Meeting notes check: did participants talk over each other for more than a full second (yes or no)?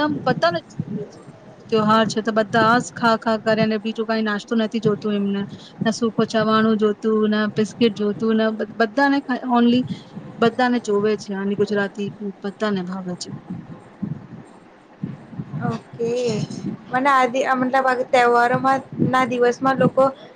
no